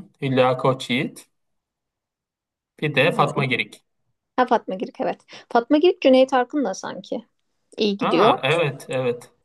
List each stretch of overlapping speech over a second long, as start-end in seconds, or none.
none